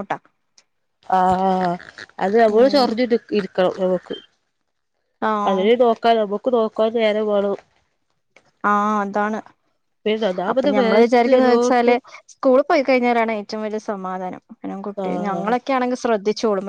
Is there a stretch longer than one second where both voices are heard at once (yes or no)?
yes